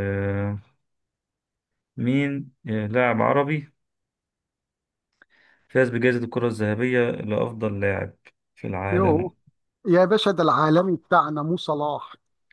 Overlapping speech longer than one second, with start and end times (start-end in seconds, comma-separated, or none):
none